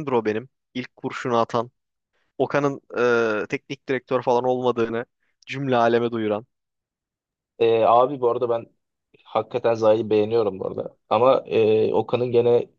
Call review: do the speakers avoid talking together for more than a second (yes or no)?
yes